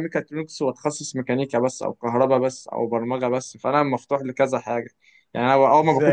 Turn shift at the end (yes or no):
yes